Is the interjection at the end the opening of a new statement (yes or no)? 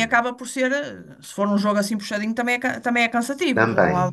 yes